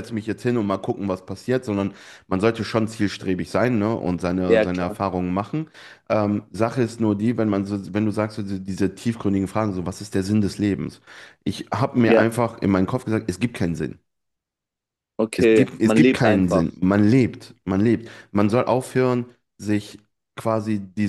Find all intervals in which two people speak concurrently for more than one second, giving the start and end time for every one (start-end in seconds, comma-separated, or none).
15.4-16.7